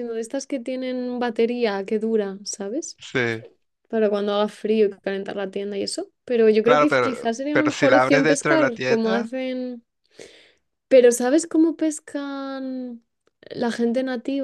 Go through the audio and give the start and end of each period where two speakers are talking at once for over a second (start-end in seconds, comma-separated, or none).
6.6-9.3